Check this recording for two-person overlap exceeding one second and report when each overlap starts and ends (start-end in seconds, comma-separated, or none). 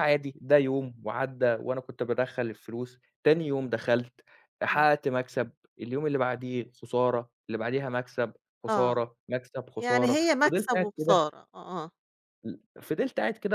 9.8-11.2